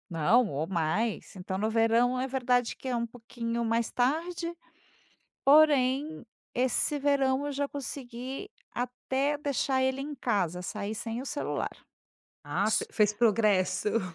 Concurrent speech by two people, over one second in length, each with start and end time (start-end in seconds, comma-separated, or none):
none